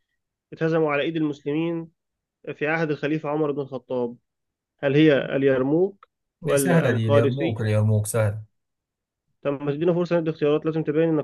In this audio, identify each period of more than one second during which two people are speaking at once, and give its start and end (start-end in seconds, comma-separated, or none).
6.4-7.8